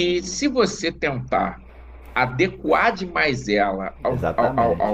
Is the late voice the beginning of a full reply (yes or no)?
no